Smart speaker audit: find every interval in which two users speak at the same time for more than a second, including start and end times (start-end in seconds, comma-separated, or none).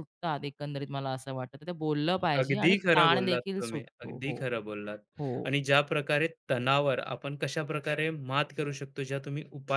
2.4-4.4